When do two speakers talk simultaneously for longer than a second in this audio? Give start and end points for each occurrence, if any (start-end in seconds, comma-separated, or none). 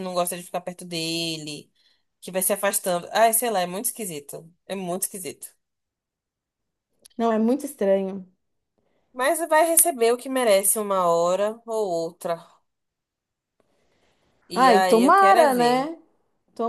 14.5-15.9